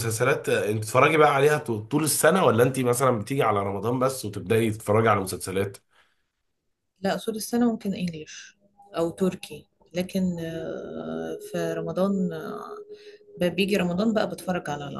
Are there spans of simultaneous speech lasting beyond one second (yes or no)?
no